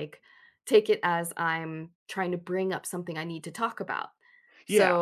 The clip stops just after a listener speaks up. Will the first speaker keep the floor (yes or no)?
no